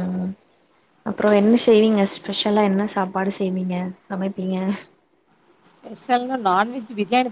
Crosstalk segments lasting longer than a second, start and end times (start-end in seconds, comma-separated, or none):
none